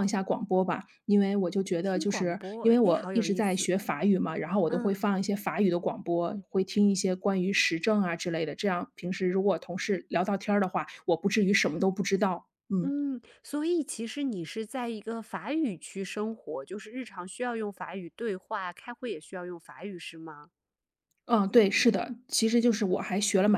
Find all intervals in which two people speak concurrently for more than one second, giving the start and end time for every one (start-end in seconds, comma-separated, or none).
1.8-3.7